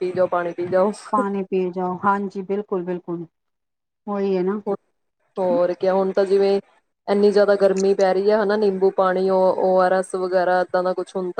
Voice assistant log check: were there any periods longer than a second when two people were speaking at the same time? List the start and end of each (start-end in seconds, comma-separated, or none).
none